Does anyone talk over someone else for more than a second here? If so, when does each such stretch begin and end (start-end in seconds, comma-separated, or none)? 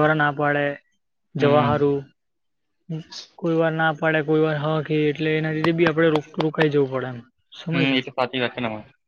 none